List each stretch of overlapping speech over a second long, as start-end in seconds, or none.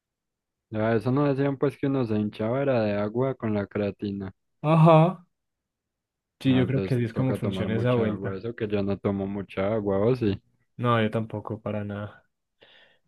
6.4-8.4